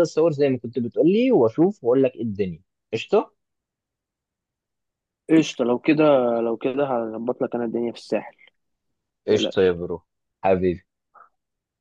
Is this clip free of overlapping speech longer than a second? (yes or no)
yes